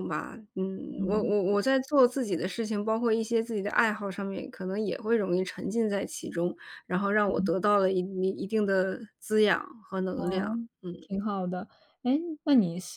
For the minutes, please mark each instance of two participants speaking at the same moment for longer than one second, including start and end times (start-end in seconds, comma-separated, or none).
none